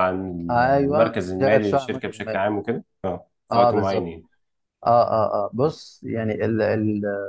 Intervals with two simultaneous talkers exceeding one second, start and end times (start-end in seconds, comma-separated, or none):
0.9-2.5